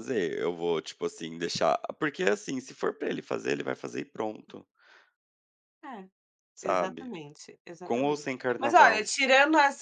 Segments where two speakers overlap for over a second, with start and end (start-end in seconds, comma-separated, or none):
7.8-9.2